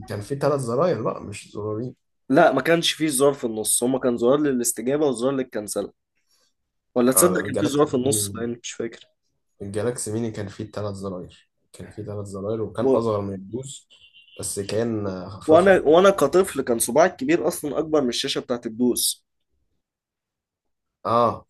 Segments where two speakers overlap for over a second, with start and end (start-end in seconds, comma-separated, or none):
7.2-8.5